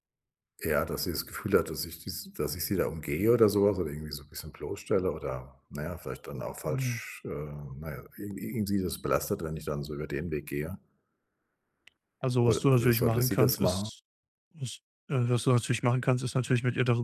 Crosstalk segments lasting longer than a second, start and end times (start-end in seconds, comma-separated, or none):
12.4-13.9